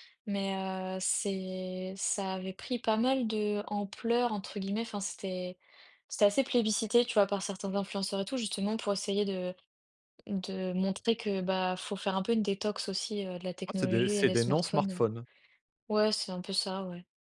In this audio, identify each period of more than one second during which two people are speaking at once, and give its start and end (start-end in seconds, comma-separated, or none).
13.7-15.0